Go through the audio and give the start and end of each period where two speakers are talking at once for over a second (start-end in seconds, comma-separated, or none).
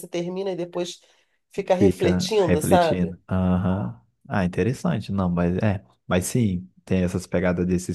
1.8-3.1